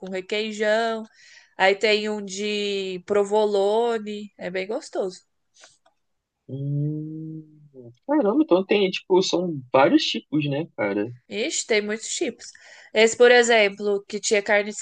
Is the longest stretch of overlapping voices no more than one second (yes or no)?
yes